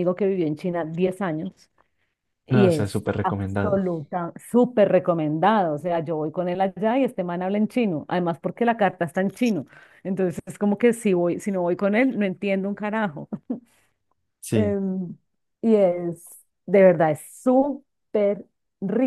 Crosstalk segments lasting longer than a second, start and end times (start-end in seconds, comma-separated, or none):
2.5-3.8